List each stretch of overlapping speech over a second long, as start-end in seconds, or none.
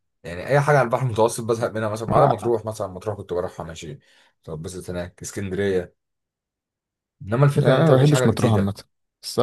7.5-8.8